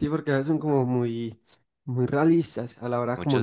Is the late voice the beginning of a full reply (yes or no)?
yes